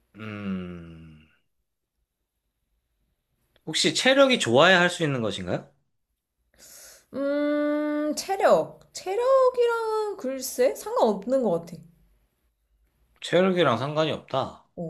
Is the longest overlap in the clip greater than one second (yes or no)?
no